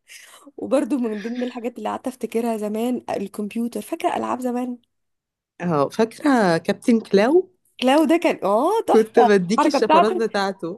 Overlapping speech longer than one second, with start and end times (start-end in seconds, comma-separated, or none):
8.9-10.3